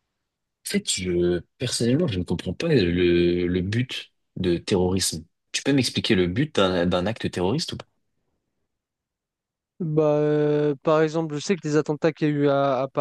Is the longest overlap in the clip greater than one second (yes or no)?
no